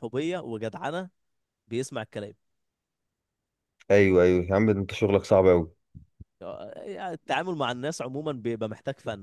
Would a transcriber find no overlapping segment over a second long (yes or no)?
yes